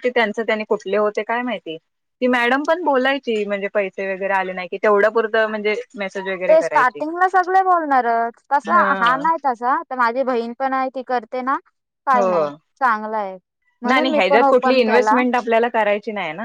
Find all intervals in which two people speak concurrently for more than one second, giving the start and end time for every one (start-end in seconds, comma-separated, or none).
13.9-15.2